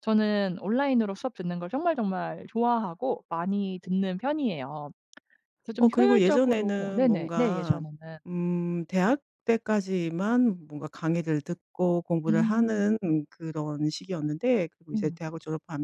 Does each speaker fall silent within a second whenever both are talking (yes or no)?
no